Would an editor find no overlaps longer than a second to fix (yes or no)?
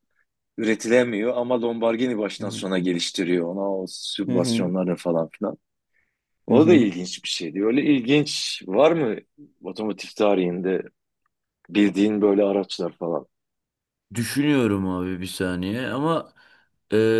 yes